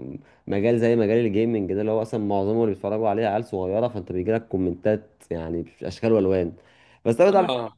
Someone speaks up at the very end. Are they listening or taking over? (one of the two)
listening